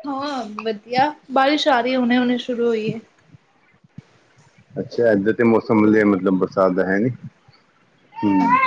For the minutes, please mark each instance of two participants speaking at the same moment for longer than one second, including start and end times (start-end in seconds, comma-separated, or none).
none